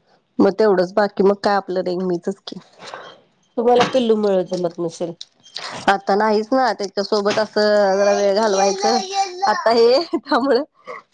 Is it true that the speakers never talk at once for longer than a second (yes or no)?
yes